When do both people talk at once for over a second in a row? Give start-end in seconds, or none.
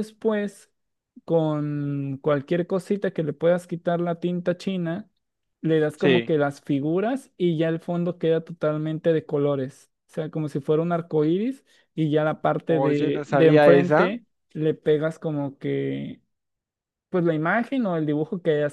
12.7-14.1